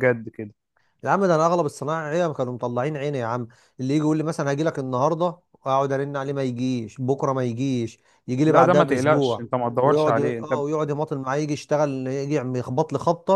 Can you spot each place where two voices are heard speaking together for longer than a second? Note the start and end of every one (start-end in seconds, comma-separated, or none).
8.4-10.5